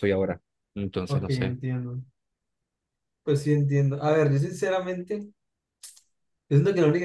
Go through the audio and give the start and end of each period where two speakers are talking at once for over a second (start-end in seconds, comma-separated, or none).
none